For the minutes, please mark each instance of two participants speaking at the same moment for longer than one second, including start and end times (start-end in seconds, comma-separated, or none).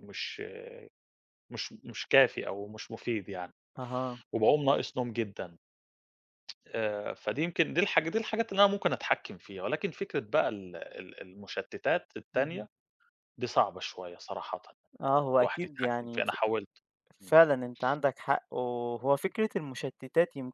15.0-16.3